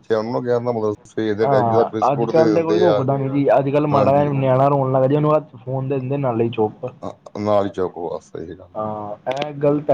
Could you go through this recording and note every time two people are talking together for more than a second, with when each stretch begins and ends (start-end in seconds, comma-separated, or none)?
1.4-3.0